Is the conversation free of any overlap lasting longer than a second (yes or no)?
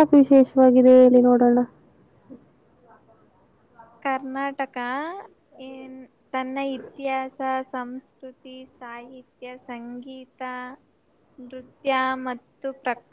yes